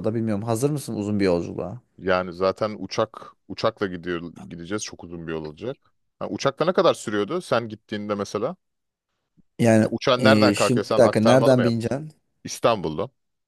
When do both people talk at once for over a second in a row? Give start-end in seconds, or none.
9.8-11.9